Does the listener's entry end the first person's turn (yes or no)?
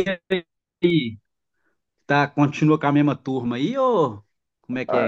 yes